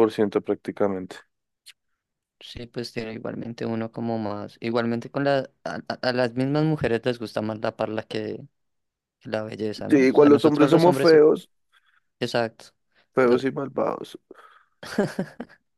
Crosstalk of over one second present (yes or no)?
yes